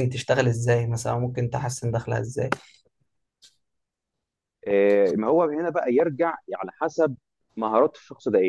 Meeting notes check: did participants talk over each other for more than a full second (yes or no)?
no